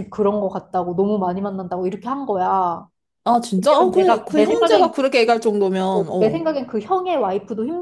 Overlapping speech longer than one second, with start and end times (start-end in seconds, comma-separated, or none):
3.6-4.9